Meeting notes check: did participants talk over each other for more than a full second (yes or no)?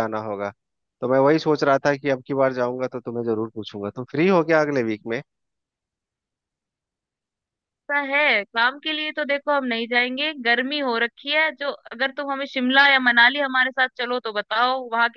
no